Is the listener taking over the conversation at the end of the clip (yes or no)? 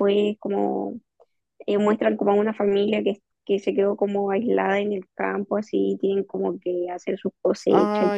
yes